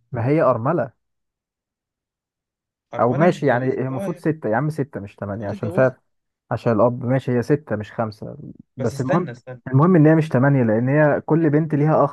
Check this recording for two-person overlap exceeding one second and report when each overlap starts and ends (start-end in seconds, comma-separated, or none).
3.0-4.2